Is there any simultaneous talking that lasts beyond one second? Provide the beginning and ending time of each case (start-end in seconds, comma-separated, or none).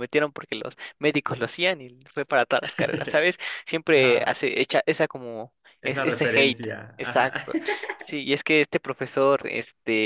5.8-7.5